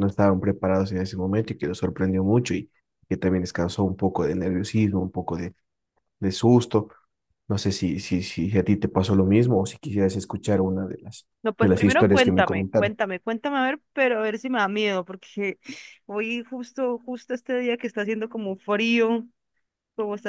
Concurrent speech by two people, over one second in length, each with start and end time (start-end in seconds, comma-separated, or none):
11.4-12.9